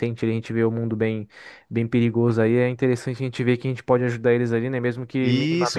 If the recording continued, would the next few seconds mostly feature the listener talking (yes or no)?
yes